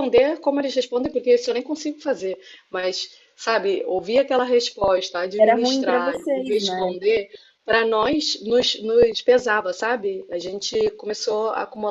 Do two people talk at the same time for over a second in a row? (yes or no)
yes